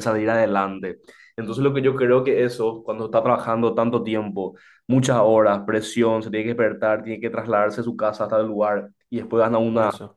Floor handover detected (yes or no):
no